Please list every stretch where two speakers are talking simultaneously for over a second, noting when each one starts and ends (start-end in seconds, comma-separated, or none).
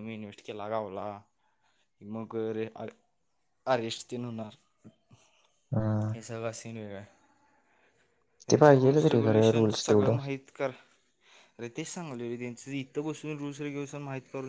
8.5-10.1